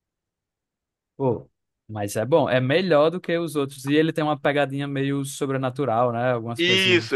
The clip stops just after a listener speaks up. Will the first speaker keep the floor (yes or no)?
no